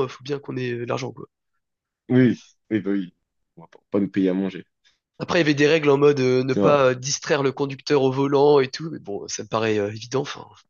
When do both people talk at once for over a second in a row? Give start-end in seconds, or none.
none